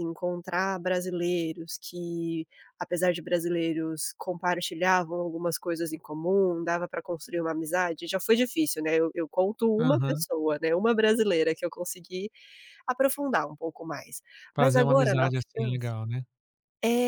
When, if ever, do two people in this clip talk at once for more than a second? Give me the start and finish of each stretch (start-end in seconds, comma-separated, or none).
14.6-15.9